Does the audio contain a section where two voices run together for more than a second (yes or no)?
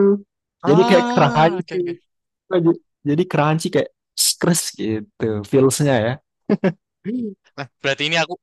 yes